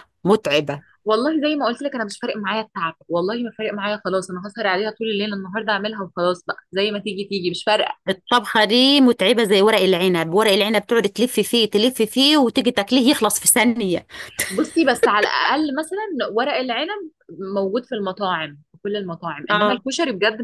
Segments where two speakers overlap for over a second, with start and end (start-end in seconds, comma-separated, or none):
none